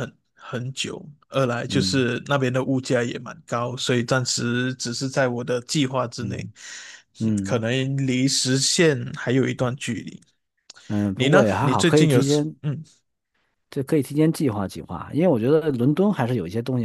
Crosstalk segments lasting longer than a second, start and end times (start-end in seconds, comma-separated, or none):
11.1-12.5